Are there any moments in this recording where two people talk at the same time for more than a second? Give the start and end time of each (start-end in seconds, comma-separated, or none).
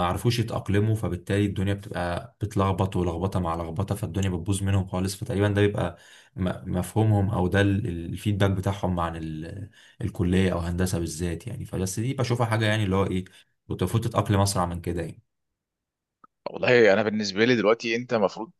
none